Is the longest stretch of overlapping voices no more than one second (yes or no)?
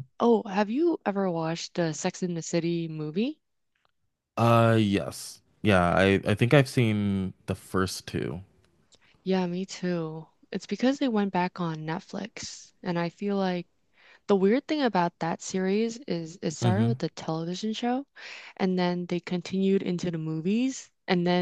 yes